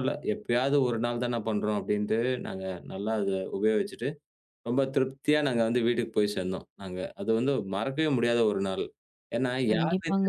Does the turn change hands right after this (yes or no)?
no